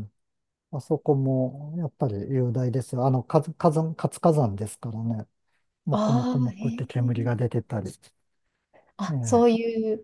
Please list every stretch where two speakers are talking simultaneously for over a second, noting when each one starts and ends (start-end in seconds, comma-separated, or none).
5.9-7.3